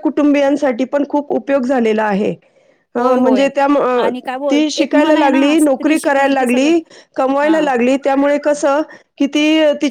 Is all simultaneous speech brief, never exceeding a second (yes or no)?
no